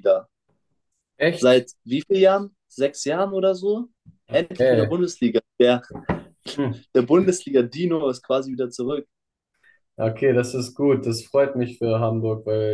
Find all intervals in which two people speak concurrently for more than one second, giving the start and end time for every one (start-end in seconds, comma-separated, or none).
none